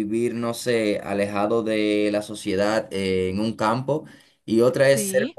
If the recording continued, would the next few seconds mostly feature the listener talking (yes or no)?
no